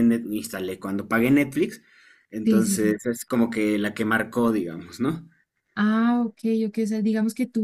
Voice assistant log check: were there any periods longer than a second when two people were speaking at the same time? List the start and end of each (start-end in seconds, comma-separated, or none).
none